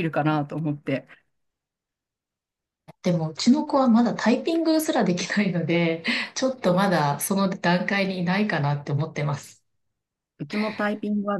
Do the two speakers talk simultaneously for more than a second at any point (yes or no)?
no